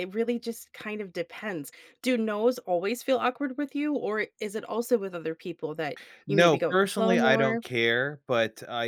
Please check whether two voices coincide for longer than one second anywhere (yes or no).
yes